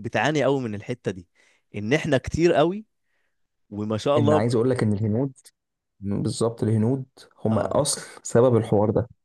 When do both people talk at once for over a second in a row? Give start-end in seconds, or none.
none